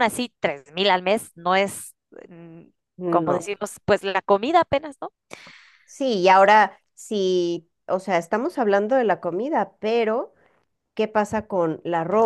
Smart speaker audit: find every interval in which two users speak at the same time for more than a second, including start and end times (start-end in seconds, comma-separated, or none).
none